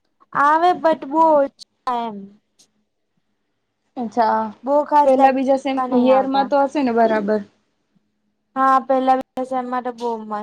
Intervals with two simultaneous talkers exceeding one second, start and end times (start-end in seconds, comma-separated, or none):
5.0-6.5